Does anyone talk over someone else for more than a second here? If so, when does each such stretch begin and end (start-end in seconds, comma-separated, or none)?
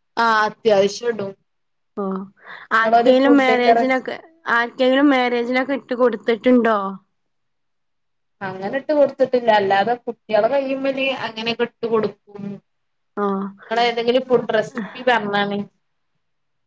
2.8-4.0